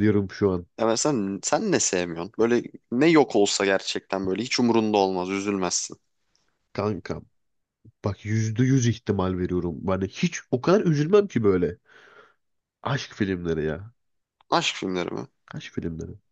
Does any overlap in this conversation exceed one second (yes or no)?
no